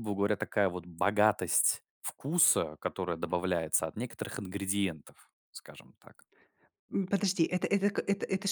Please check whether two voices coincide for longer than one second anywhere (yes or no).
no